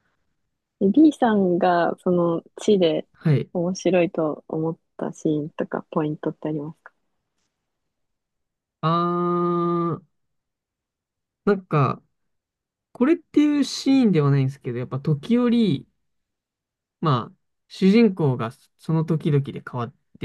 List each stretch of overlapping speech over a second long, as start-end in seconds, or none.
none